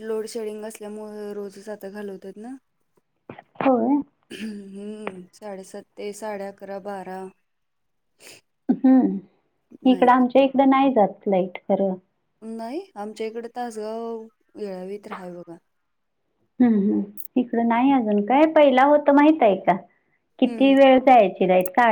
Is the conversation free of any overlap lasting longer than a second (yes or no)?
yes